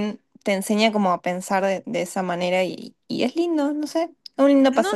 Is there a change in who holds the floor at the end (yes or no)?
yes